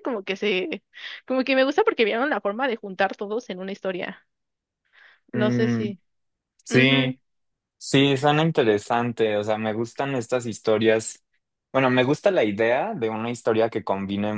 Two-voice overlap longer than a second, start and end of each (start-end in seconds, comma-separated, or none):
none